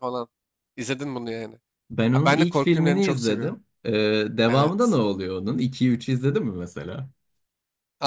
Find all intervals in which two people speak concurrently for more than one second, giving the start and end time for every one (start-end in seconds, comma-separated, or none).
2.1-3.6